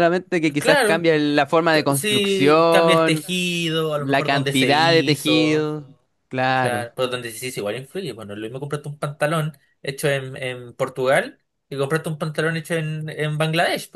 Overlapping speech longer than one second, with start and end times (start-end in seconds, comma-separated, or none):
1.7-3.3, 3.9-5.7